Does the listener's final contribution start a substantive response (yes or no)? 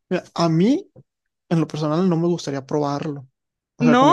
no